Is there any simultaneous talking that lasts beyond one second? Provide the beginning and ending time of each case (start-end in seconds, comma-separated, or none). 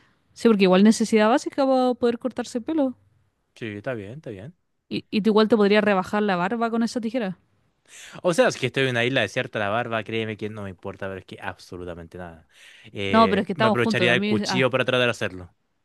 13.1-14.7